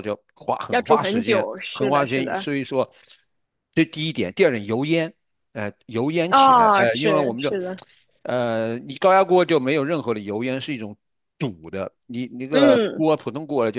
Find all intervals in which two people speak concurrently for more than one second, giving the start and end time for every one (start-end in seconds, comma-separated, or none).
0.7-2.5, 6.3-7.5